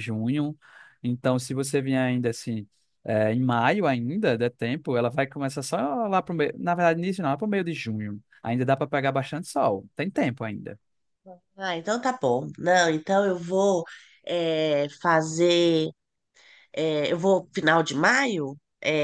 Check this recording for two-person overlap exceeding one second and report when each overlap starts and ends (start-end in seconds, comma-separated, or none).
none